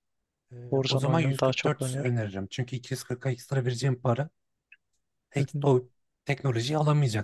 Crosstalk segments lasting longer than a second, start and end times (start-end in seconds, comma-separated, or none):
0.7-2.1